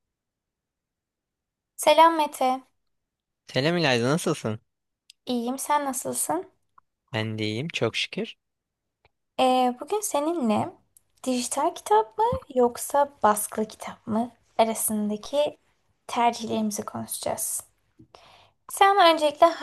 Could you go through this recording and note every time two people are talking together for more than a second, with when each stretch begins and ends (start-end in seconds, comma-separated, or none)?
none